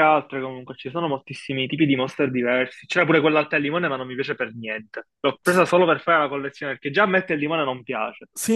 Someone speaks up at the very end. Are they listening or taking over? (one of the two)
taking over